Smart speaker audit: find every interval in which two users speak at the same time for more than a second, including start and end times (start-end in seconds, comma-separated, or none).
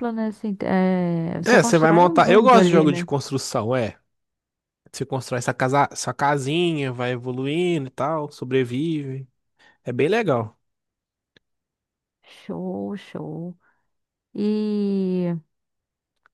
1.5-3.1